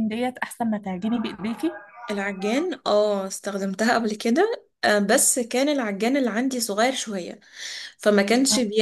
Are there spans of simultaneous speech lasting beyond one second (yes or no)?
no